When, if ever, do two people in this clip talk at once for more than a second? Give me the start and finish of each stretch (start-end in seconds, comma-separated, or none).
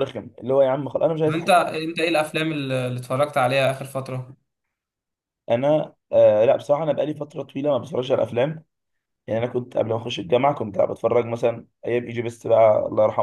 none